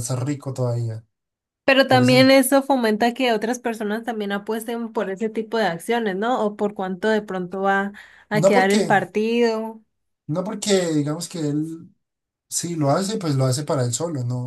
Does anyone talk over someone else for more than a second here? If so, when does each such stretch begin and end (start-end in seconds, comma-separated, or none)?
none